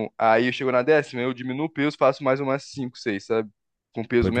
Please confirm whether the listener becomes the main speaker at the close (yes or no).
no